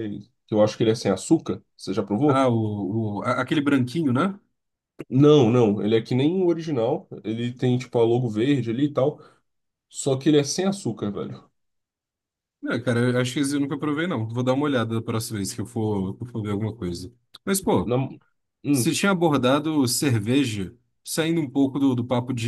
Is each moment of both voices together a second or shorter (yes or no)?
yes